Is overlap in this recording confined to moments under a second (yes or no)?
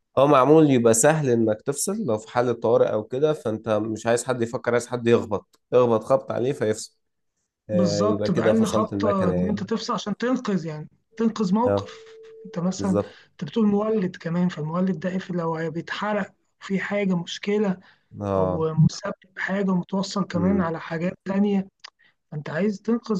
no